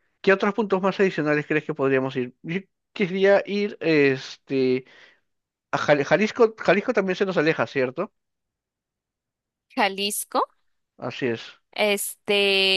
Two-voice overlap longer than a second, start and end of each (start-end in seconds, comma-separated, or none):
none